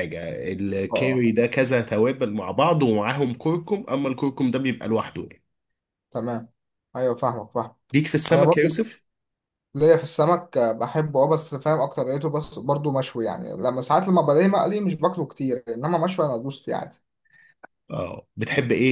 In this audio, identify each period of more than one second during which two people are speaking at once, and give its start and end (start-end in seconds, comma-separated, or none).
none